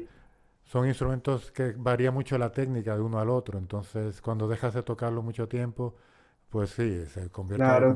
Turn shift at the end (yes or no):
yes